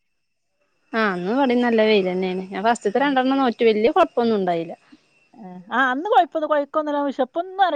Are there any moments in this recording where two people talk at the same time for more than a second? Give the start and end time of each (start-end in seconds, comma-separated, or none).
none